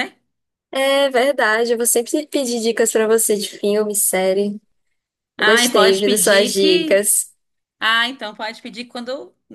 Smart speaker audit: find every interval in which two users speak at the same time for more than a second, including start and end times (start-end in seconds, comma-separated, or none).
5.4-7.1